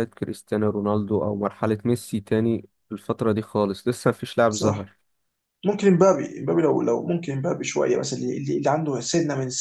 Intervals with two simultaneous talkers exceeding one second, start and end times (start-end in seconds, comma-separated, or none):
none